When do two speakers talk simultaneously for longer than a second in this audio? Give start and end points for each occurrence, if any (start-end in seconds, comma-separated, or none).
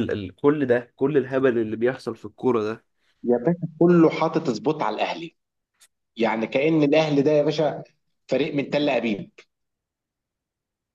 none